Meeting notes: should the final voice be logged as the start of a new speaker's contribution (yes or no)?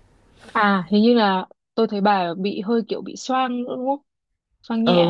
yes